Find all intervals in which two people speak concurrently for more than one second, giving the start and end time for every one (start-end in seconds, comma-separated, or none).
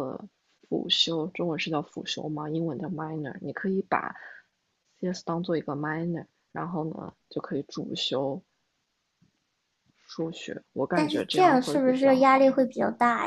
10.9-12.5